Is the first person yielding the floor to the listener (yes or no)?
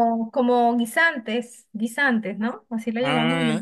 yes